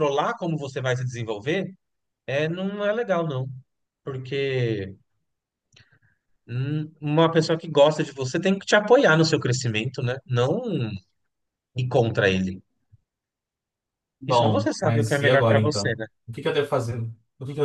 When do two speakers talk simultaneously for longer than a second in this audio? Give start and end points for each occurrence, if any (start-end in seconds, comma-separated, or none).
14.3-16.1